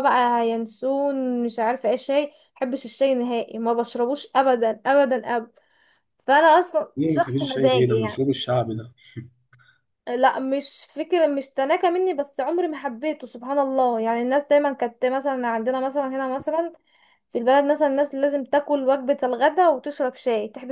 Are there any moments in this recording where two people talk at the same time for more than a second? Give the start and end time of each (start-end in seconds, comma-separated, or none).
7.0-8.2